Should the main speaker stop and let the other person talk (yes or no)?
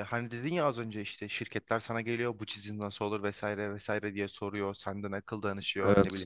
no